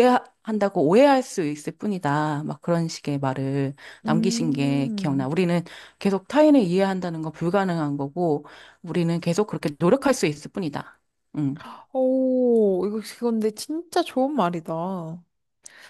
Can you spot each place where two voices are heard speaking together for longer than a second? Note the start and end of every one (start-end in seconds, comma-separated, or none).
4.0-5.3